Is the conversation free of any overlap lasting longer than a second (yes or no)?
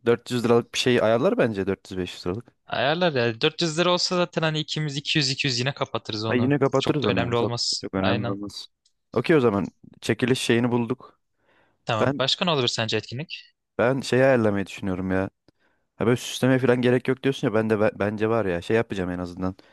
no